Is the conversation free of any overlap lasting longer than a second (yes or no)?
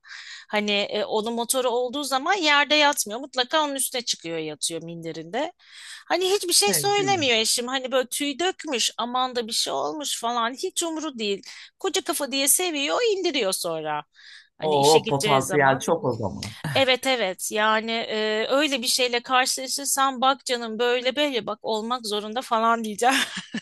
no